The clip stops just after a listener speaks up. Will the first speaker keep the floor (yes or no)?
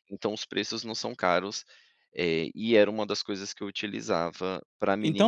no